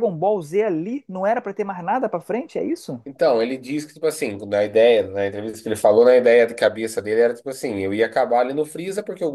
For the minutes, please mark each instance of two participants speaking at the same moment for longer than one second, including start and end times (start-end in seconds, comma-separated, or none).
none